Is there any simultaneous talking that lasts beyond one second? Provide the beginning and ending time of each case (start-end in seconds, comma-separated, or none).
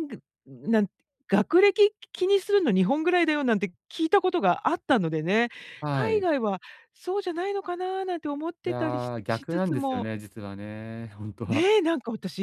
8.6-10.1